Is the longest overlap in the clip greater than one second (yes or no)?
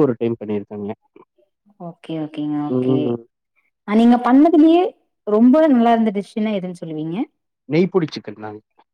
no